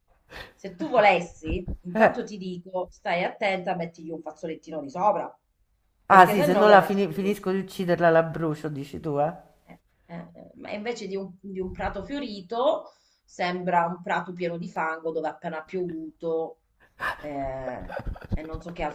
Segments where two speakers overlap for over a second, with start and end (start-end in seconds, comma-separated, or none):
6.1-7.5